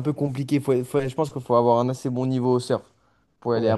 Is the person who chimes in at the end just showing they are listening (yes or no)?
yes